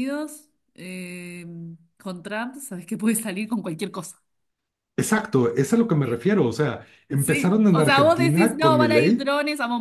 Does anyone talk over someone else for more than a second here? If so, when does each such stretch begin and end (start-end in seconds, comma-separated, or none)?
7.2-9.3